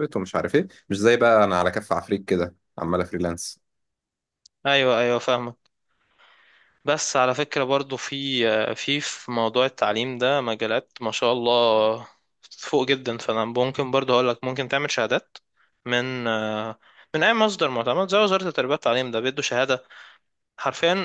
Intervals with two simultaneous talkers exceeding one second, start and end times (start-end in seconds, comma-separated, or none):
none